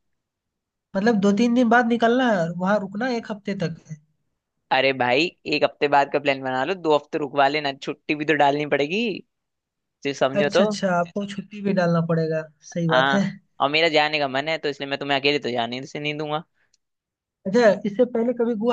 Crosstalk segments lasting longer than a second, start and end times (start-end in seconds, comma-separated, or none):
none